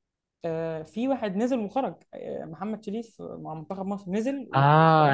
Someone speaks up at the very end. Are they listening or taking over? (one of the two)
taking over